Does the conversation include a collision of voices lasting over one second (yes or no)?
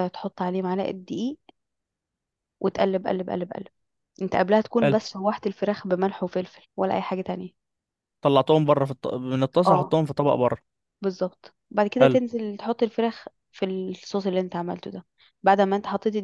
no